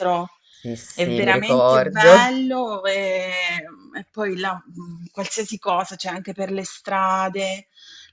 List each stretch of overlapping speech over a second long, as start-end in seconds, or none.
0.9-2.2